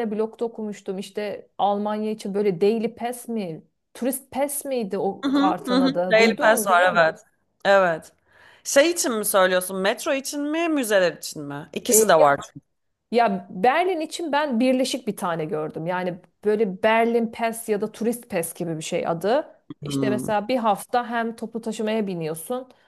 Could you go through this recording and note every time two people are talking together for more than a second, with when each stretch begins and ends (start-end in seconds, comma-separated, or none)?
5.2-7.0